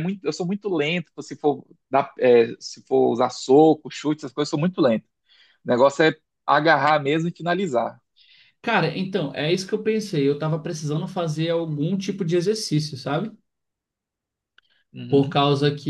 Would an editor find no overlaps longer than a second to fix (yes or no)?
yes